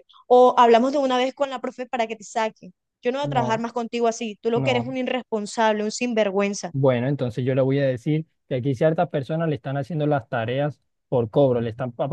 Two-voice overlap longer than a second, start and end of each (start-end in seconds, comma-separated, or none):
none